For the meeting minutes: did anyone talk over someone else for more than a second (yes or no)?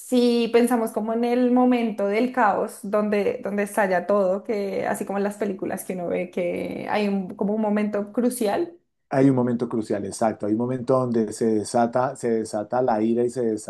no